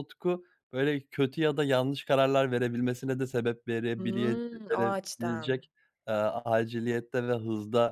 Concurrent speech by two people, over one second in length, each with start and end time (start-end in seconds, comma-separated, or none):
4.0-5.6